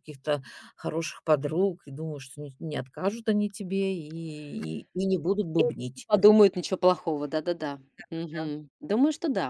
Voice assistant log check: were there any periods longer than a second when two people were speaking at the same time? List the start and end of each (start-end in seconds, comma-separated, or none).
none